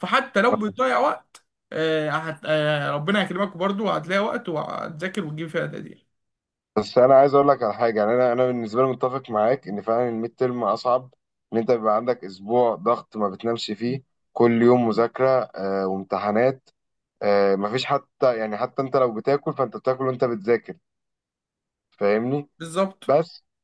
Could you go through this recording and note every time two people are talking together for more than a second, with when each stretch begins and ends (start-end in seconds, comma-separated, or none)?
none